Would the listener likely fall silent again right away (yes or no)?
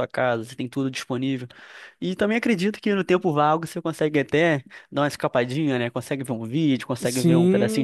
no